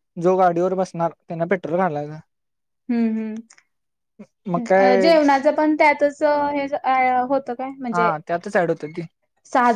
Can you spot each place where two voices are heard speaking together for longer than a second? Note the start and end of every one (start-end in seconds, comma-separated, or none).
none